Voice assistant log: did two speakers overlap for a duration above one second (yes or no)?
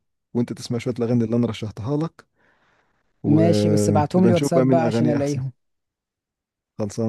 yes